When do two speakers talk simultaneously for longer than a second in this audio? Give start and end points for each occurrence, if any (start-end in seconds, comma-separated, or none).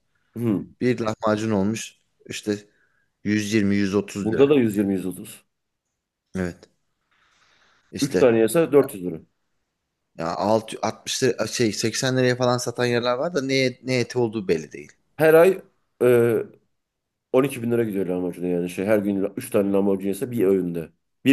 none